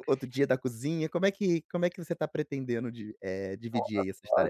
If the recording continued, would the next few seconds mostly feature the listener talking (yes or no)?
yes